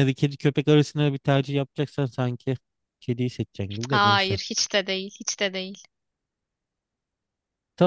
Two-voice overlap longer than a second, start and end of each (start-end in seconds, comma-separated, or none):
none